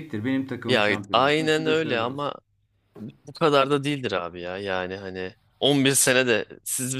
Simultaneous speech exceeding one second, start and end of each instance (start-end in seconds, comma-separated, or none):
0.7-2.3